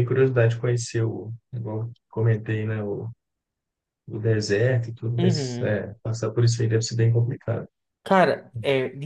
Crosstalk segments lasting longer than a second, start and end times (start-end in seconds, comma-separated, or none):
none